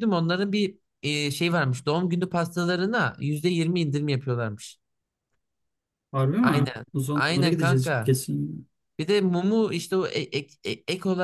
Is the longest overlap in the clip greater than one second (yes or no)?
yes